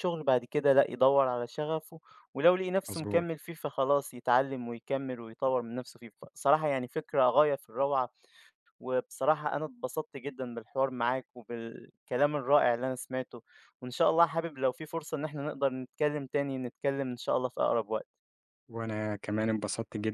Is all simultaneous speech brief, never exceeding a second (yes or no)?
yes